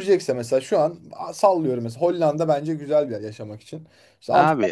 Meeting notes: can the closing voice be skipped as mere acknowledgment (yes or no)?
yes